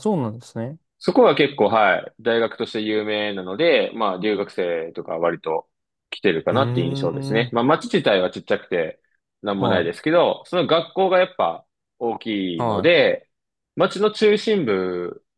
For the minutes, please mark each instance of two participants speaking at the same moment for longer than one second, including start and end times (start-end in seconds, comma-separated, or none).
none